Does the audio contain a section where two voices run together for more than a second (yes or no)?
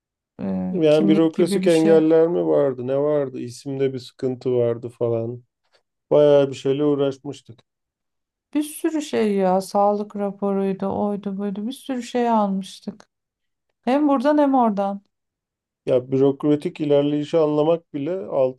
yes